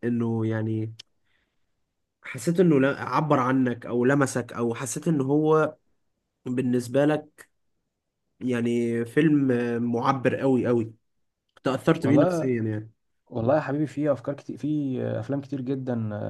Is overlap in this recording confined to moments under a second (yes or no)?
yes